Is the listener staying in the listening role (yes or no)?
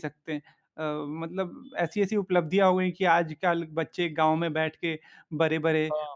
yes